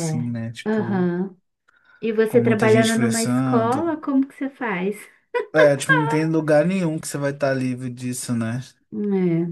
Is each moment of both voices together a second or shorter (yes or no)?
no